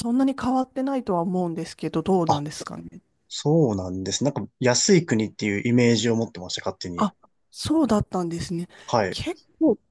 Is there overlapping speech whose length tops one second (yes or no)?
no